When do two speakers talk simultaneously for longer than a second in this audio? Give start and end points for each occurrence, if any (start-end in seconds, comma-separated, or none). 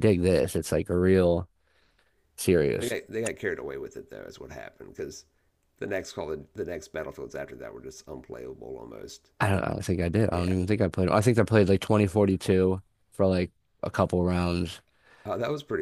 none